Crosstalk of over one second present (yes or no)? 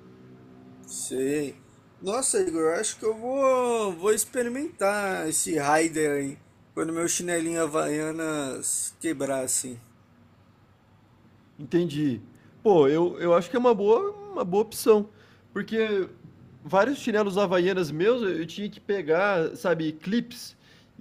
no